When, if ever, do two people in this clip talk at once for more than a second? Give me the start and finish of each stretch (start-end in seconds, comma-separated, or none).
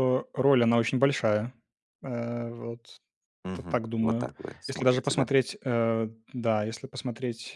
3.5-5.3